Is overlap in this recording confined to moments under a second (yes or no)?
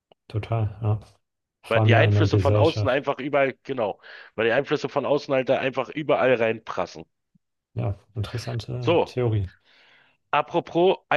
no